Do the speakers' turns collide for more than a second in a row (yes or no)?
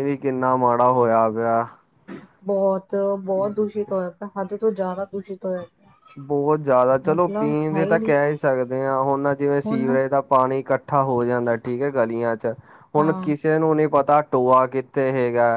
no